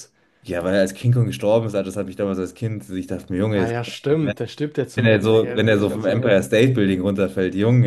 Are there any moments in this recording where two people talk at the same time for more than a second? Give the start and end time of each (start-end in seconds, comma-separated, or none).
4.9-6.4